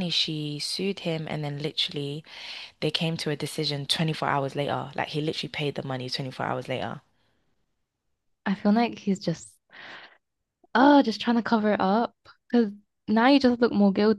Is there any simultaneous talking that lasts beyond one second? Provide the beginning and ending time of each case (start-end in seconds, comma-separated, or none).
none